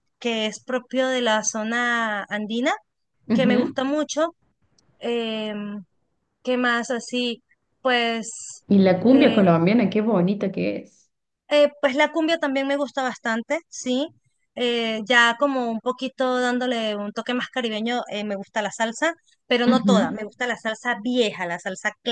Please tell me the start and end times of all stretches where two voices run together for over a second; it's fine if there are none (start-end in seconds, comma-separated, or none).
none